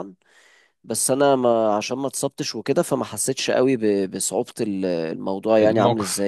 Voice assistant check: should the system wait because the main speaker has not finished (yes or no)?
yes